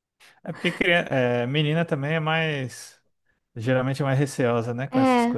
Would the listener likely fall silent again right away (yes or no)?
no